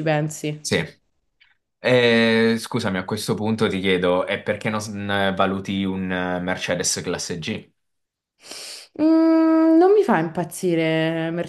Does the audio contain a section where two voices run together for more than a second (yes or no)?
no